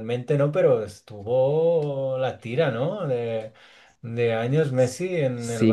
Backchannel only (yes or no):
no